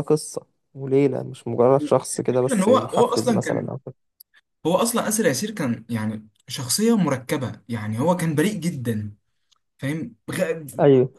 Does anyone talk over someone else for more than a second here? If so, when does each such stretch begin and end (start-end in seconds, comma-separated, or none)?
2.2-3.8